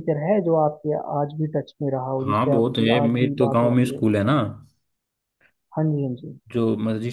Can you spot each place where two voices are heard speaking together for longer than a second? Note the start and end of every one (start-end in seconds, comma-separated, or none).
2.2-4.0